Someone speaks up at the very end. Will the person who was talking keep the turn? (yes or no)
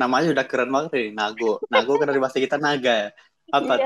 no